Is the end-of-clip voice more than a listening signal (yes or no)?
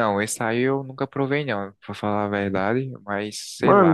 yes